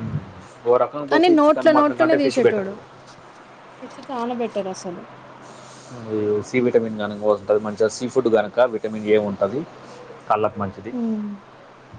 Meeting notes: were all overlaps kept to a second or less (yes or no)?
no